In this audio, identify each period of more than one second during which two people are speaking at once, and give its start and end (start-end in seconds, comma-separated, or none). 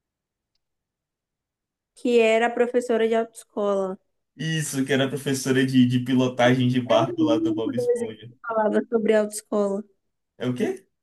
6.9-8.3